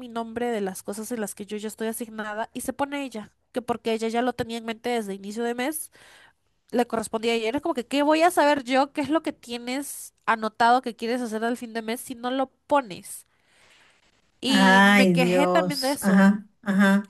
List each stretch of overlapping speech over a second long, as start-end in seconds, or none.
14.5-16.3